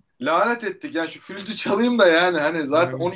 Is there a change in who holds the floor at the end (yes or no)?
no